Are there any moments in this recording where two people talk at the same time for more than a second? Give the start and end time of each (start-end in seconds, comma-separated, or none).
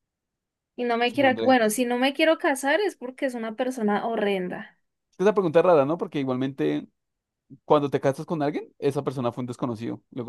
none